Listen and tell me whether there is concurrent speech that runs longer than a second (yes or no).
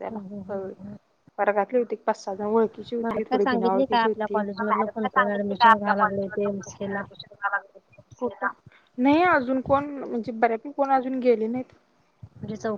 yes